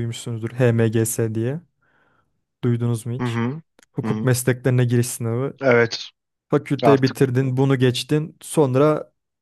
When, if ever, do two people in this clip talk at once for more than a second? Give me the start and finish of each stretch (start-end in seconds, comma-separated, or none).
none